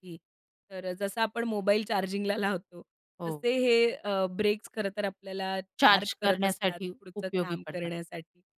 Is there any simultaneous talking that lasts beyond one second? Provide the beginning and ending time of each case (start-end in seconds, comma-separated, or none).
5.8-7.9